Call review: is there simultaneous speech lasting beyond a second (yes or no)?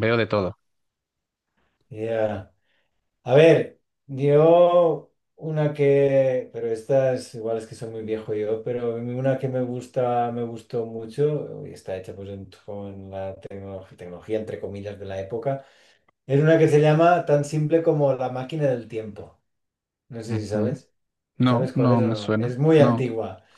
yes